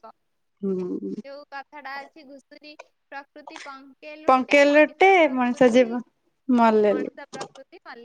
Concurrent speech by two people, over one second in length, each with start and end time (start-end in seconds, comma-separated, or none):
4.3-5.9